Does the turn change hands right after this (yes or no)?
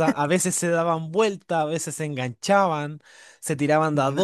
no